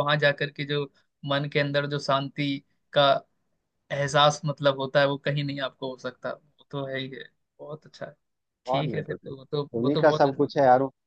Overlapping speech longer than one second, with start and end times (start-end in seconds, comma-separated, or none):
8.7-10.4